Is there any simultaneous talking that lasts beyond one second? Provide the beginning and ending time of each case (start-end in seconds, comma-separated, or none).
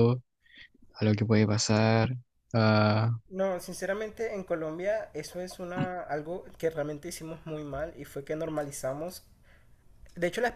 none